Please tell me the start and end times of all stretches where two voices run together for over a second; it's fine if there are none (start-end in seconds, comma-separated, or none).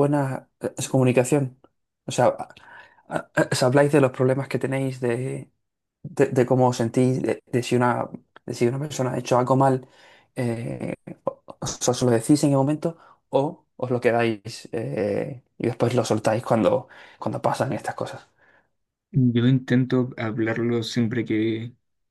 none